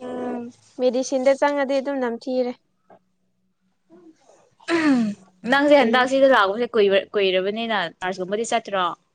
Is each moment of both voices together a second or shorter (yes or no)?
yes